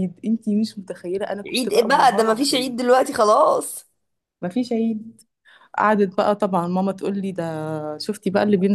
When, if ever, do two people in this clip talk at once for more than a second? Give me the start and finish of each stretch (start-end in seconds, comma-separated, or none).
1.5-2.7